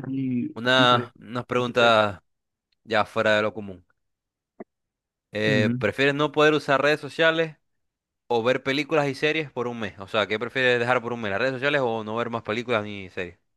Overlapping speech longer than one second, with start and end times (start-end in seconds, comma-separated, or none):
0.6-2.0